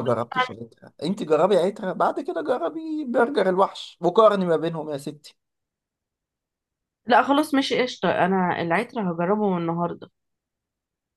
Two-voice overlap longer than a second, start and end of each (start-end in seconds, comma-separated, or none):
none